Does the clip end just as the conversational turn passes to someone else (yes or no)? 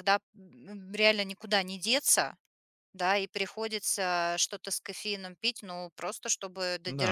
no